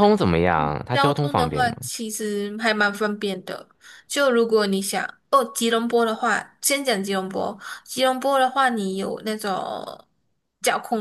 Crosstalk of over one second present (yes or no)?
yes